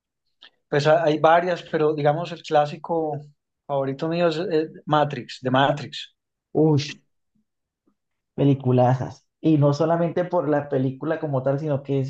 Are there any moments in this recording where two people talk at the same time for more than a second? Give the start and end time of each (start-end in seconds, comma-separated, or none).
none